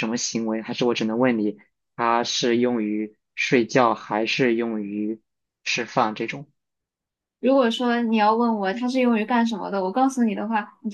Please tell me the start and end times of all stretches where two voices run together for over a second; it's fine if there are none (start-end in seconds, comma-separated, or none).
none